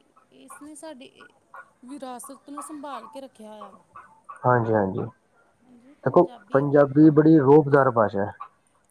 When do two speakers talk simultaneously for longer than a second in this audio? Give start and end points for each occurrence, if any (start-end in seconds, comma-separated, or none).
none